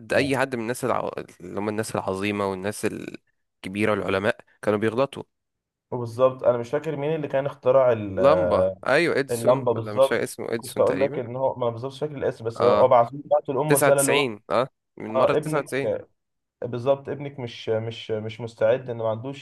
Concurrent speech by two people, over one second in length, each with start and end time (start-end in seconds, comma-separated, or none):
9.3-11.2